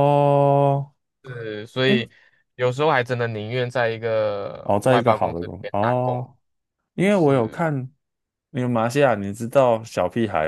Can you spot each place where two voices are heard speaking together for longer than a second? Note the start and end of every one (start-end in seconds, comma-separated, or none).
4.6-6.2